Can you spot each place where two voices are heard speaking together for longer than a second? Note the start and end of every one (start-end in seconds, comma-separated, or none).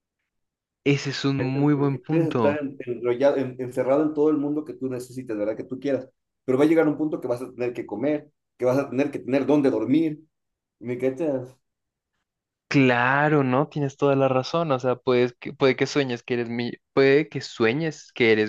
1.4-2.6